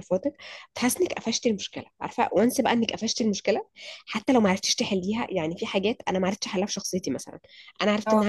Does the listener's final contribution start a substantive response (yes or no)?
no